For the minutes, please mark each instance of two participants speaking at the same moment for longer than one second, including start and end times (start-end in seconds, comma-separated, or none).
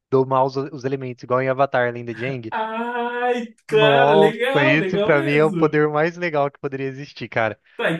3.7-5.8